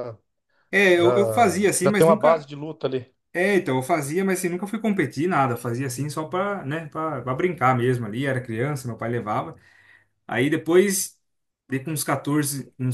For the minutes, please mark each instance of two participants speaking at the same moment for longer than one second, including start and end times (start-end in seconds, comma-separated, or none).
0.9-2.5